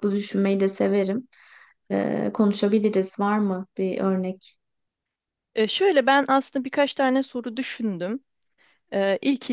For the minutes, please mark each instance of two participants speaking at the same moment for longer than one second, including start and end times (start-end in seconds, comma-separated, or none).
none